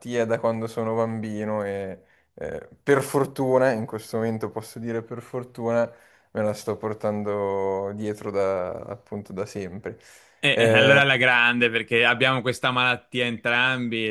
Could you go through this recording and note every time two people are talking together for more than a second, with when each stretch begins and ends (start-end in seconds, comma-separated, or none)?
none